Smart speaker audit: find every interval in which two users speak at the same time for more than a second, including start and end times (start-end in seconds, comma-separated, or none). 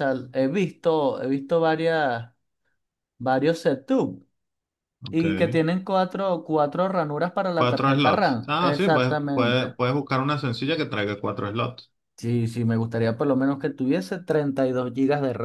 7.6-9.8